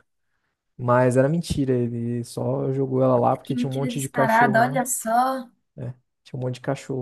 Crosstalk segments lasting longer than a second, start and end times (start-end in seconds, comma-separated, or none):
3.4-4.8